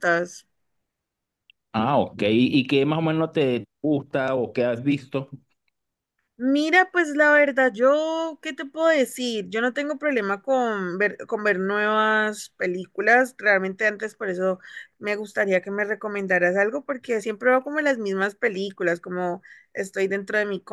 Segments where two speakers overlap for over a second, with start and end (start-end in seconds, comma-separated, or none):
none